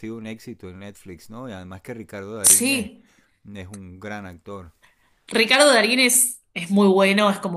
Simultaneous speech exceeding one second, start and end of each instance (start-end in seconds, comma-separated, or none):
none